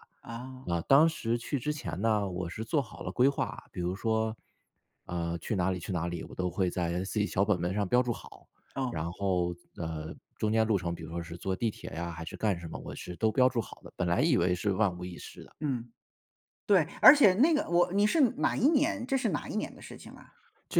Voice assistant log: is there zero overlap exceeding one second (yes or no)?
yes